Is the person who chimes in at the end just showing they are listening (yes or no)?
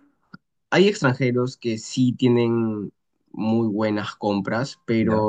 yes